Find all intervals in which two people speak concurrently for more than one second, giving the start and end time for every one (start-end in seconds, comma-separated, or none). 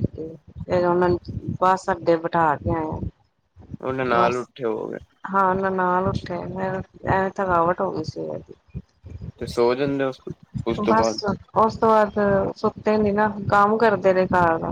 none